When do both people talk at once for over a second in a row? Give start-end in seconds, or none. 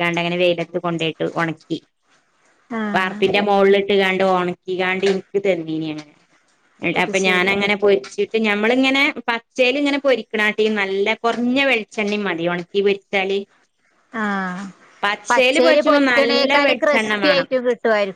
15.6-17.1